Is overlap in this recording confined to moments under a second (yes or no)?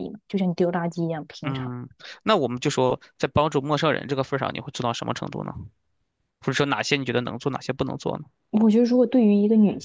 yes